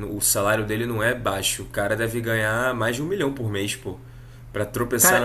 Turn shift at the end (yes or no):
no